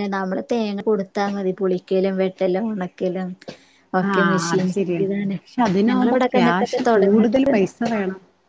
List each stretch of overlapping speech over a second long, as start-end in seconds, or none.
5.9-7.3